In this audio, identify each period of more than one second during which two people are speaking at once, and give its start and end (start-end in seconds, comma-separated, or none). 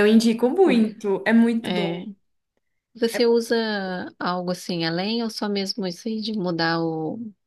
none